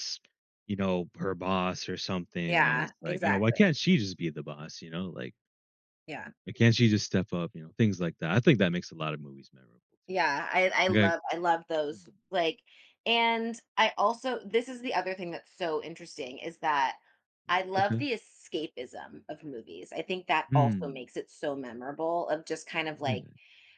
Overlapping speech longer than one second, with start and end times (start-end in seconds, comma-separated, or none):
2.5-3.8